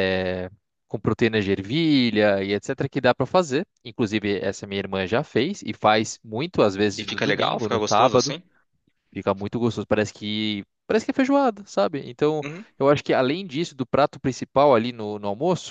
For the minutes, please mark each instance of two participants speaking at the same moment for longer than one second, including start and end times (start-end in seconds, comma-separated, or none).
6.9-8.4